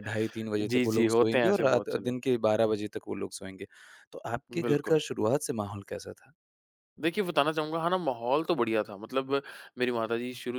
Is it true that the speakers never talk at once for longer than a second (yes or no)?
no